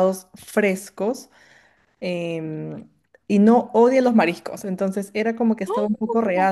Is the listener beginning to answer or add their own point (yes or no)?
no